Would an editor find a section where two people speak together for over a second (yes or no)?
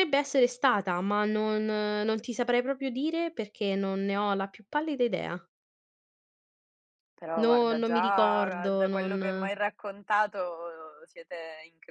yes